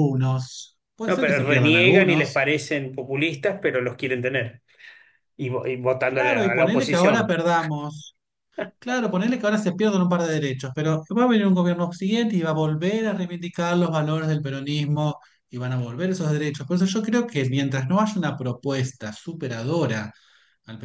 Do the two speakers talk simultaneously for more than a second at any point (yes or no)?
yes